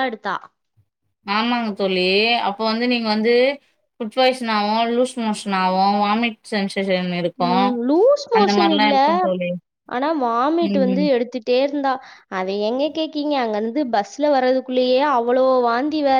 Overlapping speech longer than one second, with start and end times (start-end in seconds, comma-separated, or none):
none